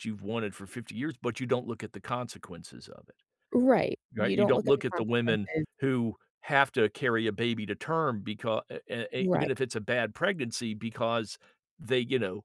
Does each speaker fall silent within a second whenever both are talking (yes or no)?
no